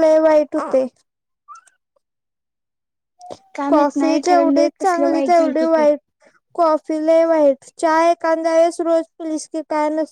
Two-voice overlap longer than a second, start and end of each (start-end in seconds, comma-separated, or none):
3.7-5.8